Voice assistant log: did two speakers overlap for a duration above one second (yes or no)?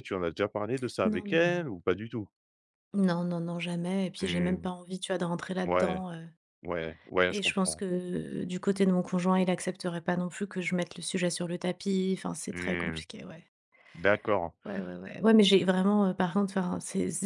no